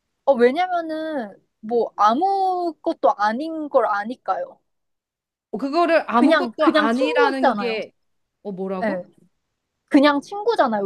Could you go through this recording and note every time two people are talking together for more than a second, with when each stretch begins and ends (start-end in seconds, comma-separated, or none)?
6.1-7.8